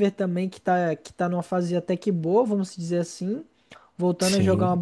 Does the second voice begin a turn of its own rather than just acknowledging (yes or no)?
no